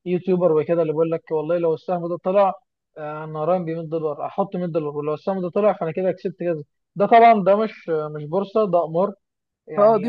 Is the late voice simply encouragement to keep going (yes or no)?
yes